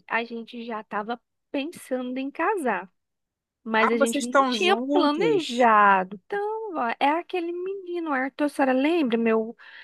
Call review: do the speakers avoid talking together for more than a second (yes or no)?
no